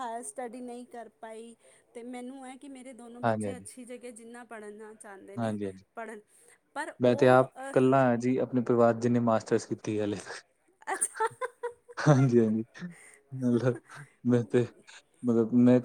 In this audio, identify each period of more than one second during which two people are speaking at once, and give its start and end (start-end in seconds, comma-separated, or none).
none